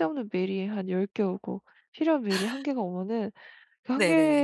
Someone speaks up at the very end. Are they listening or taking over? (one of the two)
listening